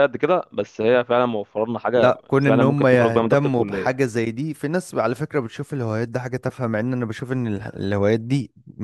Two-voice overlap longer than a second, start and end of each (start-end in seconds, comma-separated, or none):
1.9-4.0